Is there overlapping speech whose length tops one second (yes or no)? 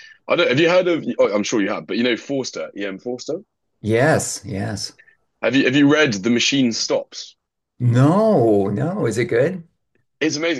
no